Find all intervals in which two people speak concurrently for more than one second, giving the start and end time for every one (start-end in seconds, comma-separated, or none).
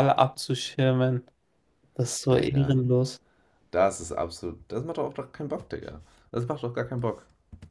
none